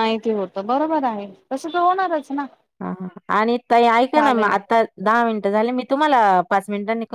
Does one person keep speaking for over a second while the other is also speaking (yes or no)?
no